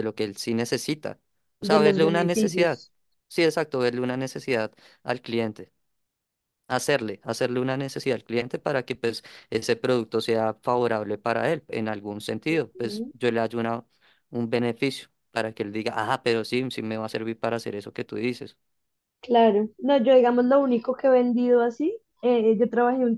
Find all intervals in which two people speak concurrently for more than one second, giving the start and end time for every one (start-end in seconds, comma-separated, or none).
1.6-2.8